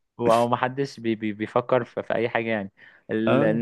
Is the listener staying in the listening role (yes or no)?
yes